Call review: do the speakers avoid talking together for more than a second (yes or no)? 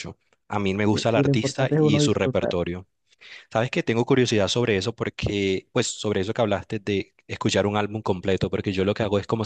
no